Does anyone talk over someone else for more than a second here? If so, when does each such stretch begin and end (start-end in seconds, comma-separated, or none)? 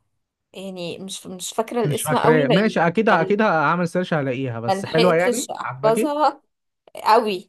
1.8-3.4, 4.7-6.1